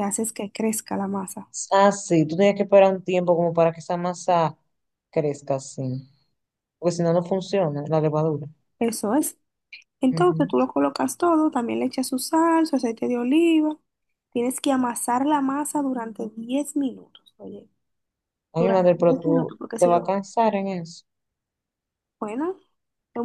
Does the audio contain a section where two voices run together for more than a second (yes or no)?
yes